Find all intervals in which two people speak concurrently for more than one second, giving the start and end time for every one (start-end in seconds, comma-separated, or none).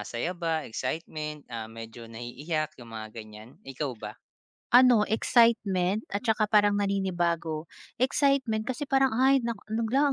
none